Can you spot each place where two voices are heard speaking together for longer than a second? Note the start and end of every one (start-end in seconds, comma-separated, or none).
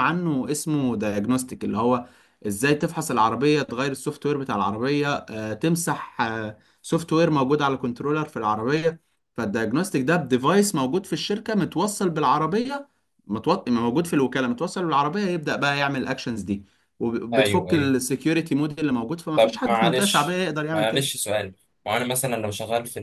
19.4-21.1